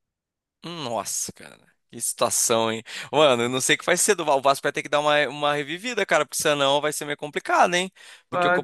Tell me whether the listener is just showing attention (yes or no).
yes